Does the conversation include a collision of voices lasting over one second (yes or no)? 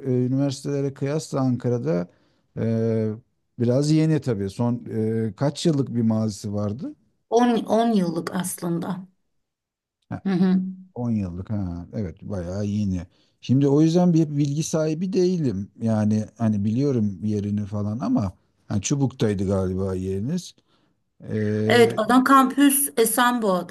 no